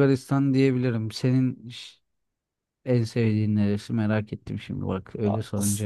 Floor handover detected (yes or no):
yes